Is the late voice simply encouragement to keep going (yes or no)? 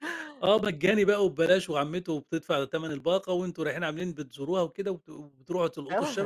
no